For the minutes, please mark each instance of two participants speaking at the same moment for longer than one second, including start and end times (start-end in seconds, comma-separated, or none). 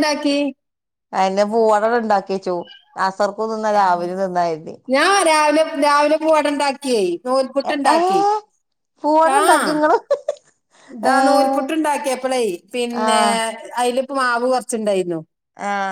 none